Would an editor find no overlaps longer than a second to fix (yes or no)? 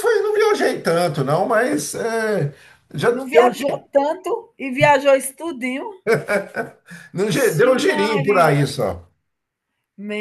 no